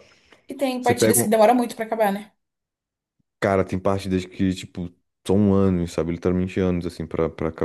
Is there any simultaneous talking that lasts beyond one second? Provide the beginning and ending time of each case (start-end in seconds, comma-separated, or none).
none